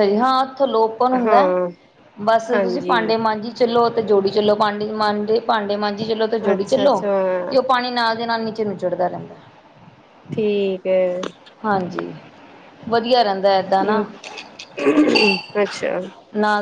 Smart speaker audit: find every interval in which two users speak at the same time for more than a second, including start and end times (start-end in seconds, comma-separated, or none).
none